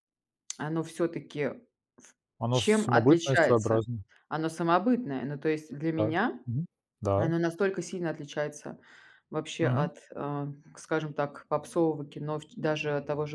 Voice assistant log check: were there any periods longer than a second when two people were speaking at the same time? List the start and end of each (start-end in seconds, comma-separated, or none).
2.5-3.8